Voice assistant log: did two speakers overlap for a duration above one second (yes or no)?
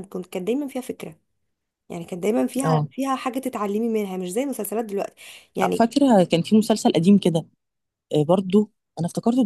no